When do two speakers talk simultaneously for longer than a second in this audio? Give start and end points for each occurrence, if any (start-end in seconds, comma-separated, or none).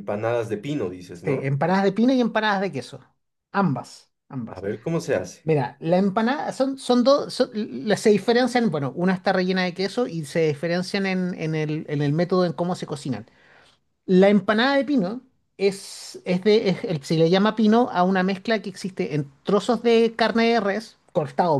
none